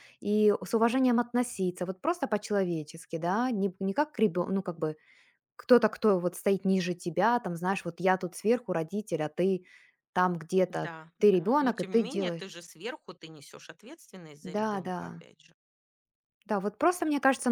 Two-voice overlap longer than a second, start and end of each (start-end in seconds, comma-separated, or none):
10.7-12.5